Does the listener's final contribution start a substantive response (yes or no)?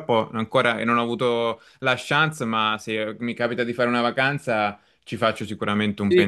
yes